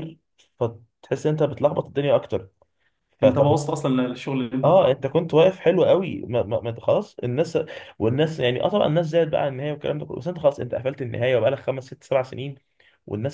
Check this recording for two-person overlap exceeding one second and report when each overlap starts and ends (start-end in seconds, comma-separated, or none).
none